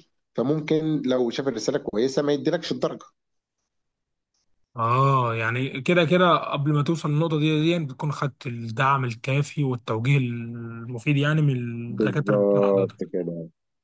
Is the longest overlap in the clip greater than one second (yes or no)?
yes